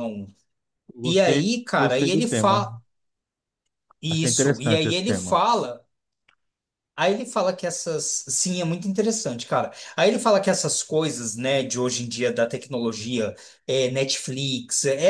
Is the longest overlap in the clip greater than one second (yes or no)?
yes